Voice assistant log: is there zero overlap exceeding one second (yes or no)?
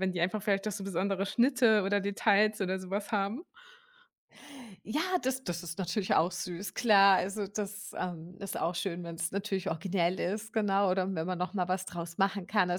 yes